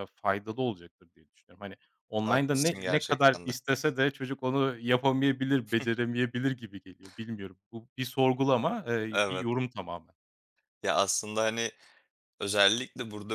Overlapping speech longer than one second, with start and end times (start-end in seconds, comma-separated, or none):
2.2-3.5